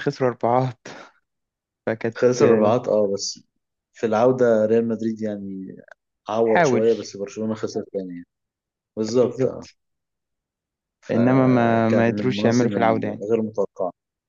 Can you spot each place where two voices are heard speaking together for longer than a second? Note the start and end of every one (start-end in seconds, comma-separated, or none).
11.1-13.2